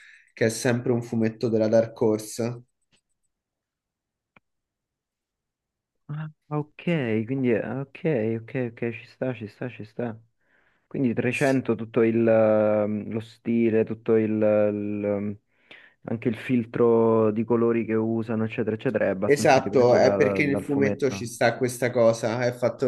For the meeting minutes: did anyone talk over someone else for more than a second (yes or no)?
yes